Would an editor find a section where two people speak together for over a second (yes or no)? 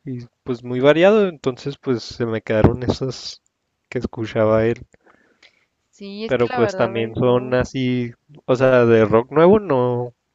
yes